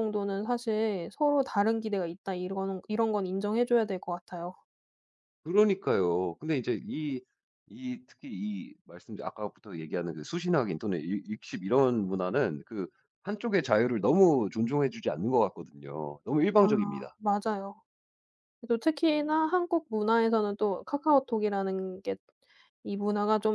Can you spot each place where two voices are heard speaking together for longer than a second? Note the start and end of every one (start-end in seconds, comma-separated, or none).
none